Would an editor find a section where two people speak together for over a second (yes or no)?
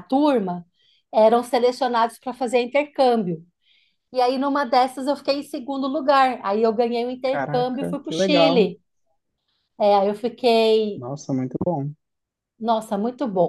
yes